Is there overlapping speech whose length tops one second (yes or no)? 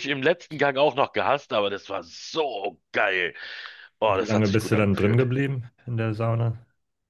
yes